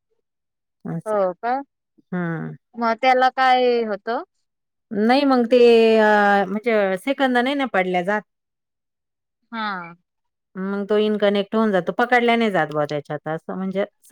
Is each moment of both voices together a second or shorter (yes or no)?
yes